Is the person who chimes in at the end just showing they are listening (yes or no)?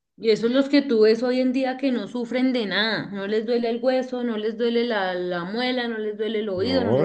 no